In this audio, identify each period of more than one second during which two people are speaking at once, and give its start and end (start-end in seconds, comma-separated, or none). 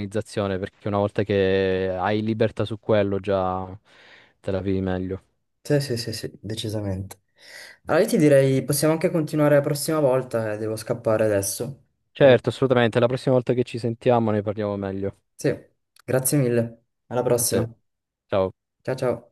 none